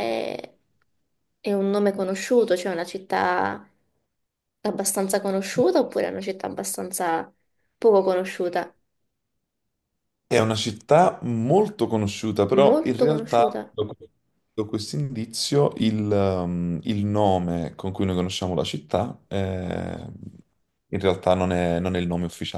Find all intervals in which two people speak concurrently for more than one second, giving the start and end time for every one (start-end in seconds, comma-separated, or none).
12.5-13.8